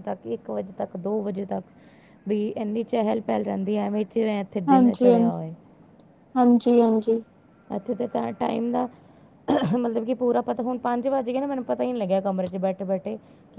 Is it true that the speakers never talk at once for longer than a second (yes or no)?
yes